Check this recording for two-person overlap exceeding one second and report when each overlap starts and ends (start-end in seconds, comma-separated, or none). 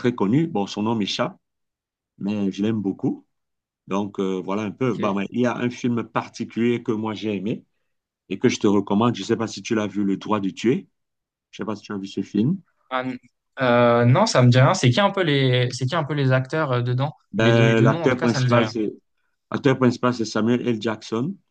17.3-18.7